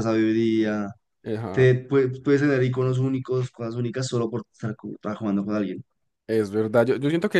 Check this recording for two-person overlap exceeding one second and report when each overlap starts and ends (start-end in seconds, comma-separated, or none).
none